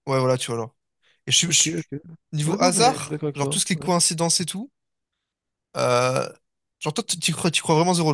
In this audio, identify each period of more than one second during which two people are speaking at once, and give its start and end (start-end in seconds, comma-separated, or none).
2.5-3.9